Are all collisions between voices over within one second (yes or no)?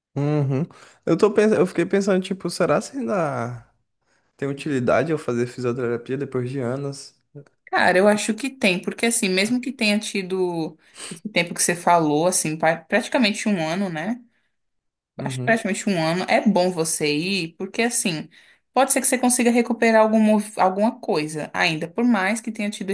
yes